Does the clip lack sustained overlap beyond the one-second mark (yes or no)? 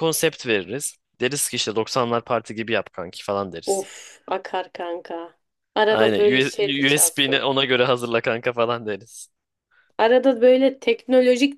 yes